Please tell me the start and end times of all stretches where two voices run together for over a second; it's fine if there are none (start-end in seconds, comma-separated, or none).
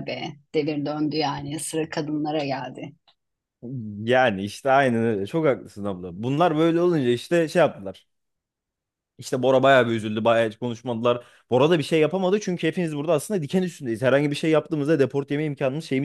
none